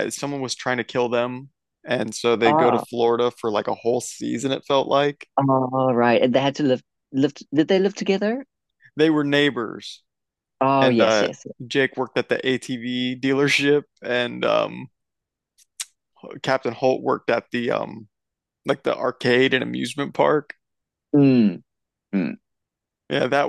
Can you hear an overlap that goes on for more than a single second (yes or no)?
no